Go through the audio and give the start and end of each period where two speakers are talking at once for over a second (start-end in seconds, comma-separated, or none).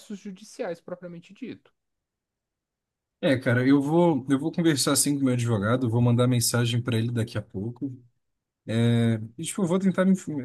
none